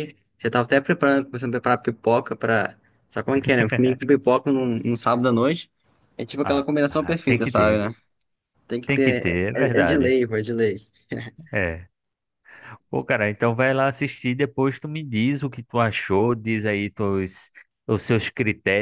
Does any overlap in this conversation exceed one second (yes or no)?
yes